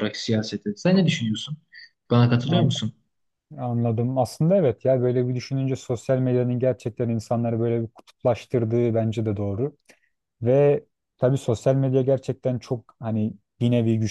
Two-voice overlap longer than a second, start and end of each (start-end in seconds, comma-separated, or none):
none